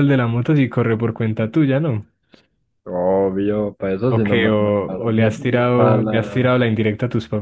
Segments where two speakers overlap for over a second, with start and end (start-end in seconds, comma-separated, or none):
4.1-6.6